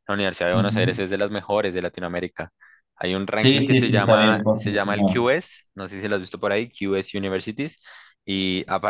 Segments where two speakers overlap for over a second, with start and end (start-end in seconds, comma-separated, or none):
3.3-5.3